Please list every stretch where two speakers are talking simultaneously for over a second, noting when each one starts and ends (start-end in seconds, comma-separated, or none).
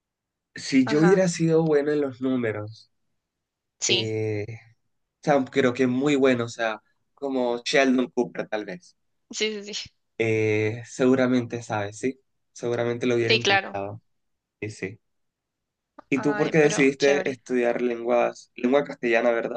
16.1-17.4